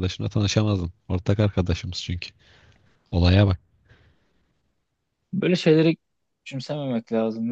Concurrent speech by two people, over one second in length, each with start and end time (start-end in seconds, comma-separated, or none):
none